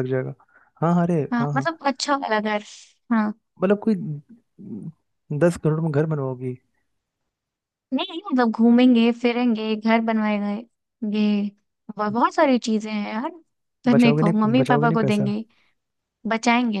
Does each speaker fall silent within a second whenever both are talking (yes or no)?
no